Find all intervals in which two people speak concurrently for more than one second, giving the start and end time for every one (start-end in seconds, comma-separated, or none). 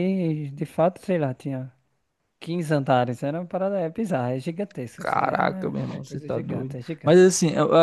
5.0-7.2